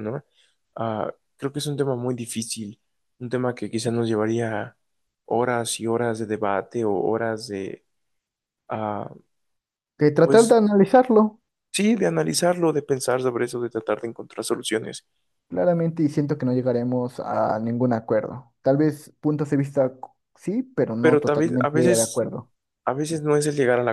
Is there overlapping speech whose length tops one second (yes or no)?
yes